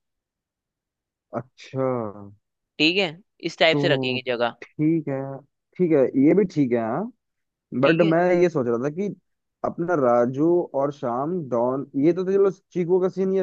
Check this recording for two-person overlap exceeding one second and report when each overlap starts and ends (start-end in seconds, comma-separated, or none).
none